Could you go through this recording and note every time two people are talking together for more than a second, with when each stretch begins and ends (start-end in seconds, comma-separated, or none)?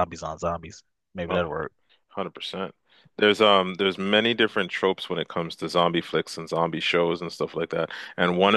none